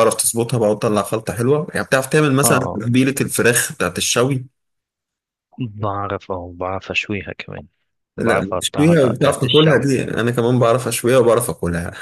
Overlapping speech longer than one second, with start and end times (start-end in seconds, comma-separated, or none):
8.2-9.9